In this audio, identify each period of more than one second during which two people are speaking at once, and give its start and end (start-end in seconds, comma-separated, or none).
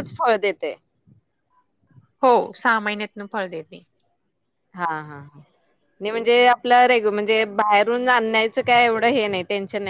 none